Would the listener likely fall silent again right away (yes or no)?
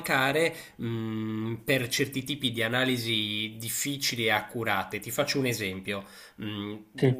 yes